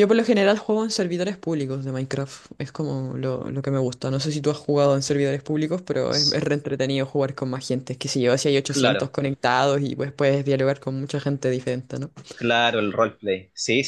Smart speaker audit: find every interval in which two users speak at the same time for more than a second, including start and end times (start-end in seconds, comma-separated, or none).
none